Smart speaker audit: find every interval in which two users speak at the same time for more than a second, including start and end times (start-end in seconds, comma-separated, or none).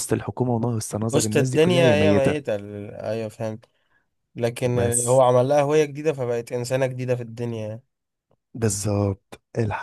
1.1-2.5